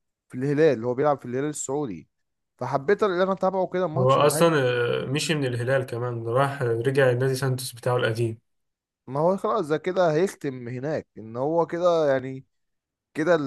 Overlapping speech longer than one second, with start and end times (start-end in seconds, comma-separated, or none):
none